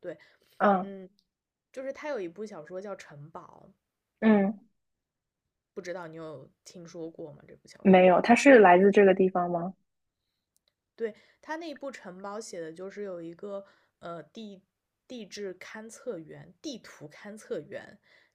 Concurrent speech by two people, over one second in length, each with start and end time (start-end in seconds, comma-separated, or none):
none